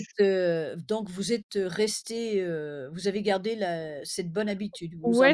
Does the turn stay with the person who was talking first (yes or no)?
no